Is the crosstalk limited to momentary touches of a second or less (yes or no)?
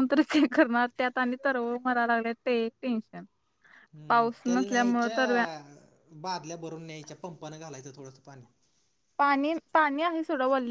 no